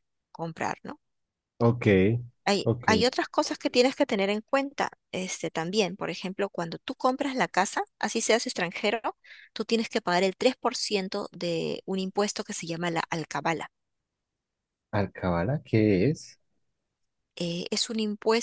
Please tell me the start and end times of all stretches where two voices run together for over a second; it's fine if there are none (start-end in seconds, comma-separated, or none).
none